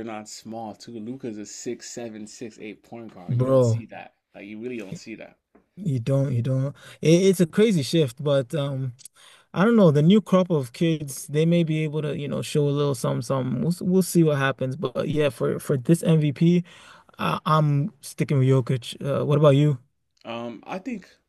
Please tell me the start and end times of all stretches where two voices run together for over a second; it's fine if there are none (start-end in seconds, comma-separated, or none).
none